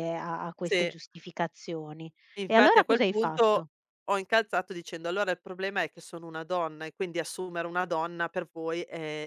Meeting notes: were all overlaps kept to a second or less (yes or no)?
no